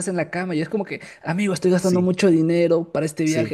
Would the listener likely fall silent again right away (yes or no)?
yes